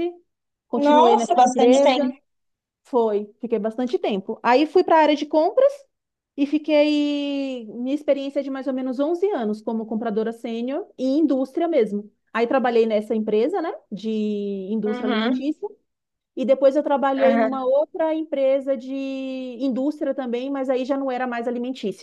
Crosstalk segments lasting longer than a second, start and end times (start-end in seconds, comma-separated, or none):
0.9-2.1